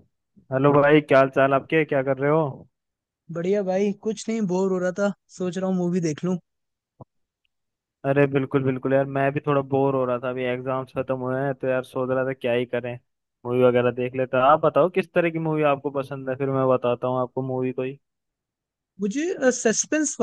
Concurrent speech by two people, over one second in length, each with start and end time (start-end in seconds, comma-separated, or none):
none